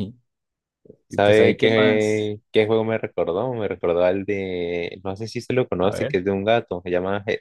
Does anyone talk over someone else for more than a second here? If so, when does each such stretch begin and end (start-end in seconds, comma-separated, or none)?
1.1-2.3